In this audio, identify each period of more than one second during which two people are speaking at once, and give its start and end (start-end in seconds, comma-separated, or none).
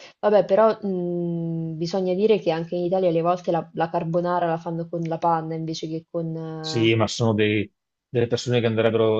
none